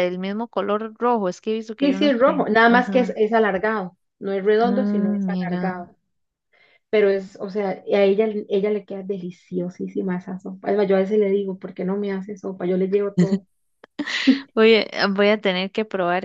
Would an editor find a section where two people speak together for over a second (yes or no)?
yes